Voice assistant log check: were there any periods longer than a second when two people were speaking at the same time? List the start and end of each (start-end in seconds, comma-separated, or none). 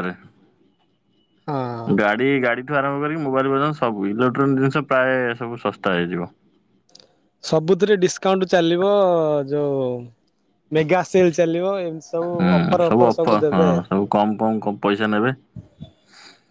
none